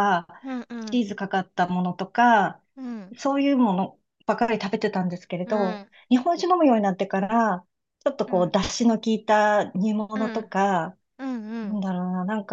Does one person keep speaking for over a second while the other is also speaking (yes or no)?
no